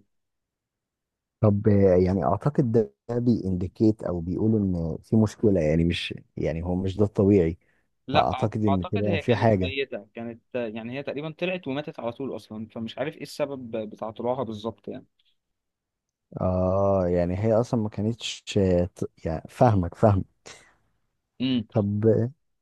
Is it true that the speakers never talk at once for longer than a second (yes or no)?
no